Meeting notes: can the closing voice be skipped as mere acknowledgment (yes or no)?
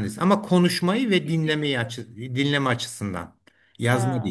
yes